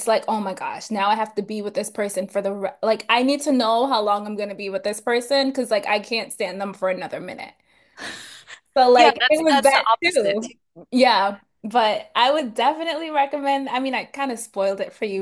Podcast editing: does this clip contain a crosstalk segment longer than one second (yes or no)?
yes